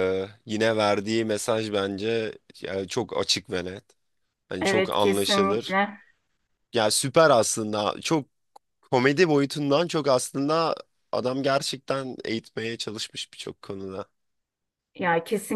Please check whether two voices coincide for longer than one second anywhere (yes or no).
yes